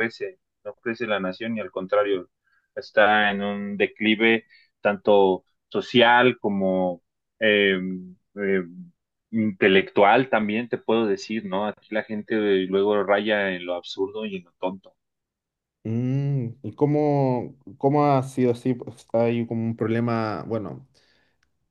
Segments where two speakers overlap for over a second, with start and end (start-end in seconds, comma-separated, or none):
none